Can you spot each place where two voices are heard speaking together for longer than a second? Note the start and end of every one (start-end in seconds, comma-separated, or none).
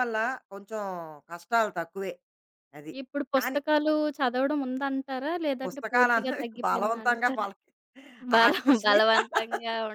5.6-7.4